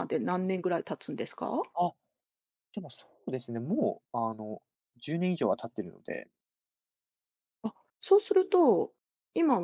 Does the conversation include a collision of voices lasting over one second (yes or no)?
no